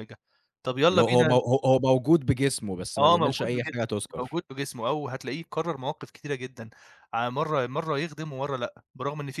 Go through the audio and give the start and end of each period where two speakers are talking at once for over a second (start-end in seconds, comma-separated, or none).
3.0-4.4